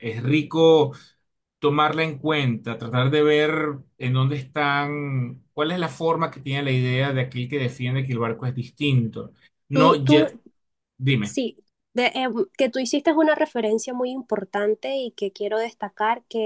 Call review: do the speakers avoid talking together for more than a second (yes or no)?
yes